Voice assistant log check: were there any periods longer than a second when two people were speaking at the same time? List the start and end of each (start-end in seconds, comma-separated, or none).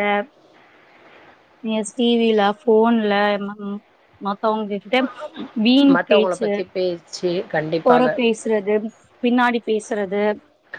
none